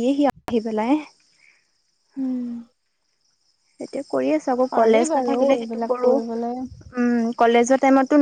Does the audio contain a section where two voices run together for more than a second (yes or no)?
yes